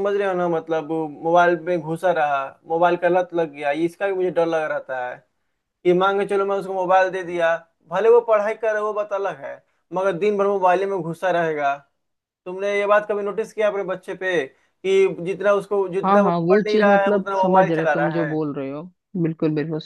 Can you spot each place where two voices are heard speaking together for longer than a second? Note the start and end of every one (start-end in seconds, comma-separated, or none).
16.0-18.4